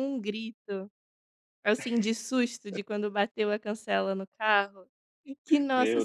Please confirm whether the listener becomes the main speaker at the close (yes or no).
no